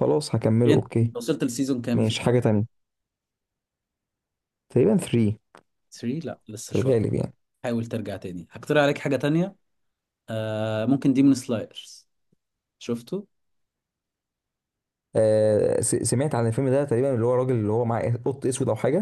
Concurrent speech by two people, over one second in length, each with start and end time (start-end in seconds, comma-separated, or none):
none